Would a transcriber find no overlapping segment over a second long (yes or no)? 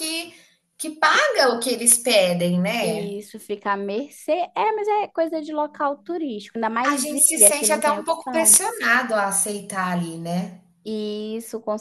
no